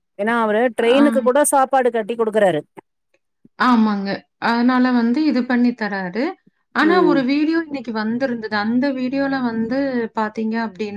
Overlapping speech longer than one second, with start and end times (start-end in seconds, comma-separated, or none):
none